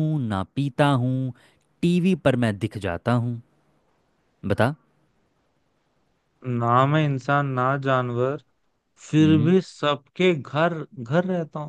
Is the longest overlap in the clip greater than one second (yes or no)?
no